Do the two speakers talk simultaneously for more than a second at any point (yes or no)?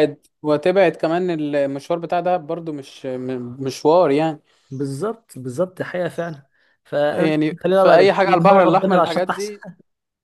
yes